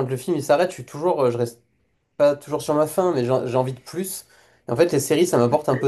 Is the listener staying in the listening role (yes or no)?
yes